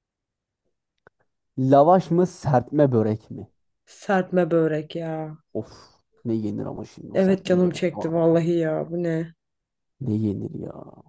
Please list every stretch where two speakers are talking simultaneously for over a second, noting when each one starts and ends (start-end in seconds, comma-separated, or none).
7.1-8.4